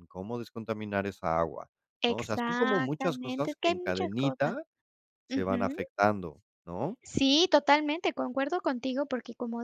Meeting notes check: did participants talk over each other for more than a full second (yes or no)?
yes